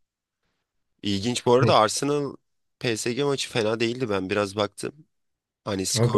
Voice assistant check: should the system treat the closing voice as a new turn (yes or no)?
no